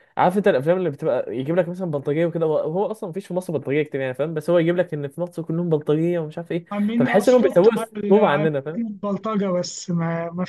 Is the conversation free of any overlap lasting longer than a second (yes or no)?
no